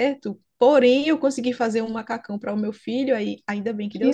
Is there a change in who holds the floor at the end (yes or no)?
yes